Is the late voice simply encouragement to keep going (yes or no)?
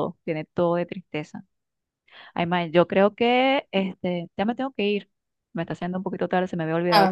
yes